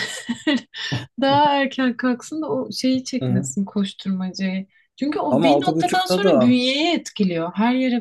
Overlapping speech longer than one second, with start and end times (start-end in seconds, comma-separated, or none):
5.3-6.6